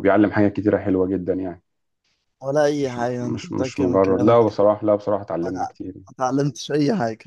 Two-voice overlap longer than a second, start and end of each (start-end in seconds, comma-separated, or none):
2.8-4.4